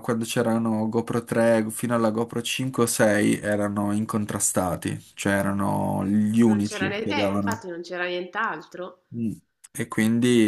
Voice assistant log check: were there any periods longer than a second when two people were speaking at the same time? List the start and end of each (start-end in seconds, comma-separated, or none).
6.4-7.6